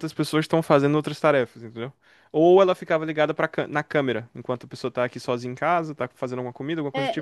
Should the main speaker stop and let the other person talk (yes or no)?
yes